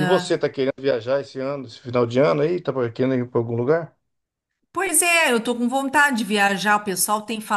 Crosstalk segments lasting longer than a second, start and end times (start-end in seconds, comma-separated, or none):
none